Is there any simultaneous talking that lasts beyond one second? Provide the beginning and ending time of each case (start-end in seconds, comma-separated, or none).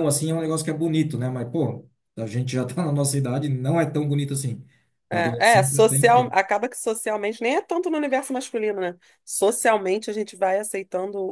5.1-6.3